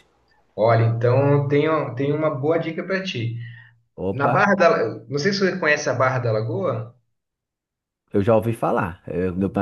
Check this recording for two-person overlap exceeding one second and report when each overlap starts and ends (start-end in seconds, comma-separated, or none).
none